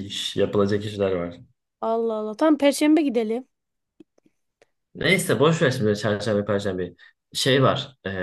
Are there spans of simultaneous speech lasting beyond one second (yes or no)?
no